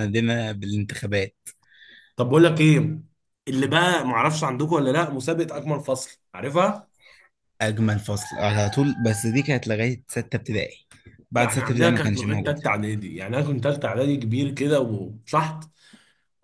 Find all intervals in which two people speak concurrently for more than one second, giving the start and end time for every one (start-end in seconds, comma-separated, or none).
11.3-12.6